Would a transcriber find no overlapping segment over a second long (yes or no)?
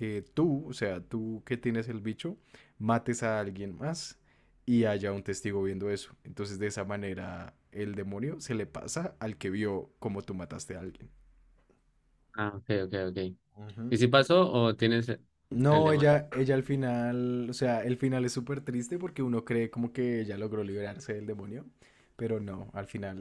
yes